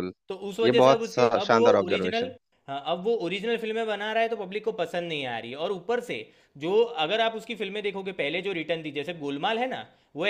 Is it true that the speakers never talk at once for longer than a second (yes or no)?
no